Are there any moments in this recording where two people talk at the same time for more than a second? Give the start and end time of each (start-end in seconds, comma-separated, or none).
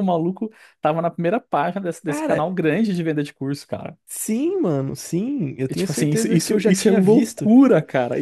5.7-7.5